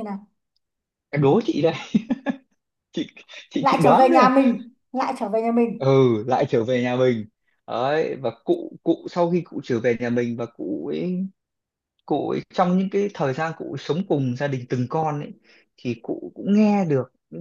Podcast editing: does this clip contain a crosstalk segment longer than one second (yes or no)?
no